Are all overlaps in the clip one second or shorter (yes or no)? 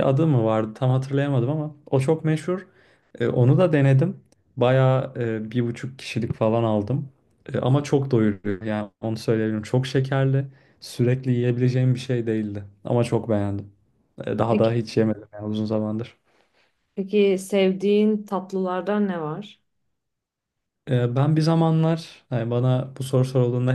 yes